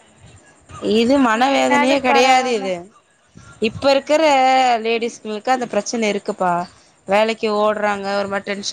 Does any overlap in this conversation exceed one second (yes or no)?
yes